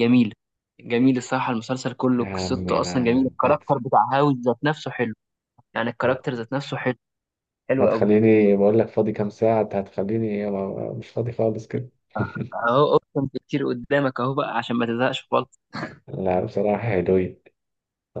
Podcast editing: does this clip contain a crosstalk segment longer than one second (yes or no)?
yes